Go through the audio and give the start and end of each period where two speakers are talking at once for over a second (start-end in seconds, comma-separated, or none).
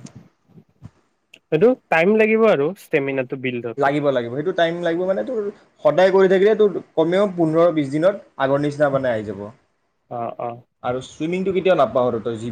none